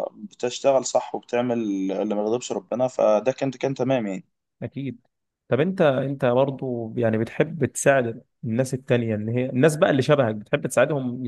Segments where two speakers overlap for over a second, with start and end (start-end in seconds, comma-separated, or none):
none